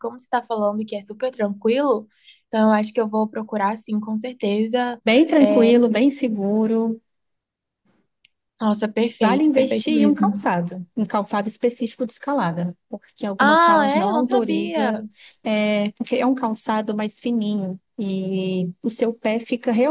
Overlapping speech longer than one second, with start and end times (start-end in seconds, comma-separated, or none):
9.2-10.4, 13.4-14.9